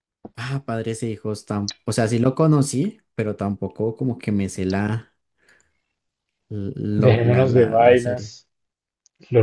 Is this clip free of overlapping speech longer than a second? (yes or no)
no